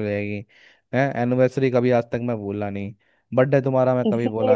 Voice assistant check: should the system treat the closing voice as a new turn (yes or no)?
yes